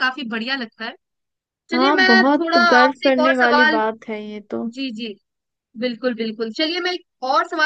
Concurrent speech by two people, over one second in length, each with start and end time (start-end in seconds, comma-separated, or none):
1.7-3.8